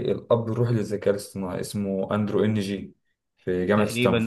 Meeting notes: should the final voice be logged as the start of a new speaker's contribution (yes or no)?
yes